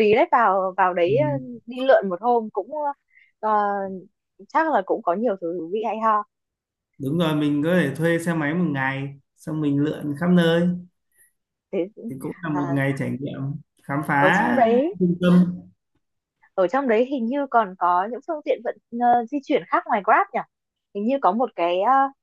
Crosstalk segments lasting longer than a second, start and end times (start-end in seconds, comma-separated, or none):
none